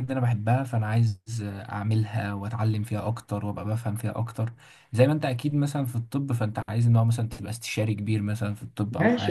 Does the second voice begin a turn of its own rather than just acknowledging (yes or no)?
yes